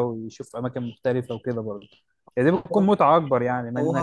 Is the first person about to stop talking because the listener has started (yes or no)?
yes